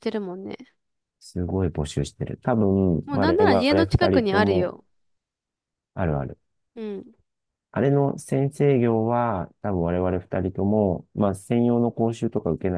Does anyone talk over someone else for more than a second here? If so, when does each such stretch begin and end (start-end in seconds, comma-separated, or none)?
3.0-4.7